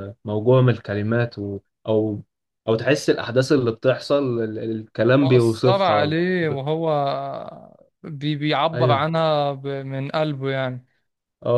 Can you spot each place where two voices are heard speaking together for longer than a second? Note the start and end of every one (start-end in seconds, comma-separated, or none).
5.2-6.6